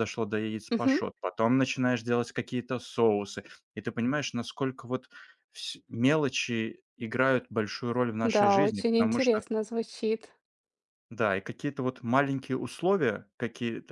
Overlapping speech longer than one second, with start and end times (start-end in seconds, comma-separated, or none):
8.2-9.4